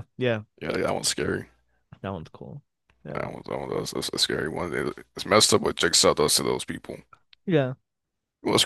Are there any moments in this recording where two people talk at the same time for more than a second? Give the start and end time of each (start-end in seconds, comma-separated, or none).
none